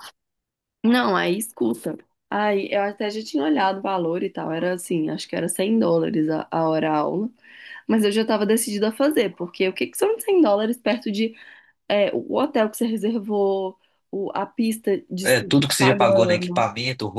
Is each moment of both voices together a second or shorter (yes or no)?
no